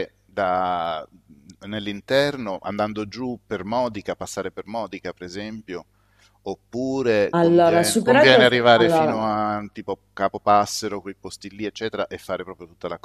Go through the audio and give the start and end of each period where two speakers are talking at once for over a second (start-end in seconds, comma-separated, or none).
7.3-9.2